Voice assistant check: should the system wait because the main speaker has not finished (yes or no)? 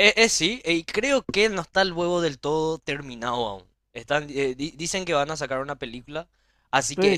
no